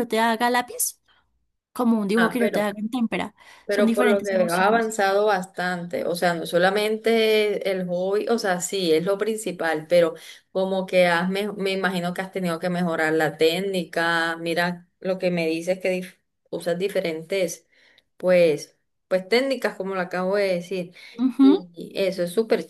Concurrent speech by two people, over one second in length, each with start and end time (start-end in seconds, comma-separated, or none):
3.6-5.0